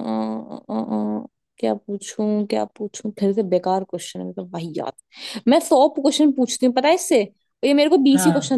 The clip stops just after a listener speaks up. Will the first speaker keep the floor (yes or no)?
yes